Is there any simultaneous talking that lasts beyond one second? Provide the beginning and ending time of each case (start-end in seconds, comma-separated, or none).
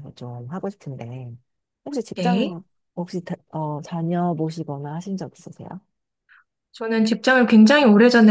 none